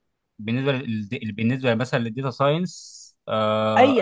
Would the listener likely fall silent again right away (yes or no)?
no